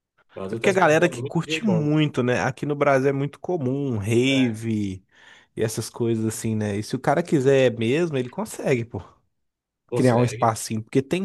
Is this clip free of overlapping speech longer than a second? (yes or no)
no